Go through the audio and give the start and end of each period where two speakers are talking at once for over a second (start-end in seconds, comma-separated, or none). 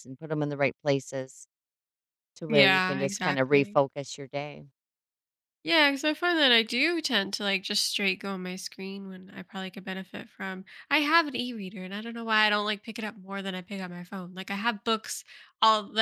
2.5-3.8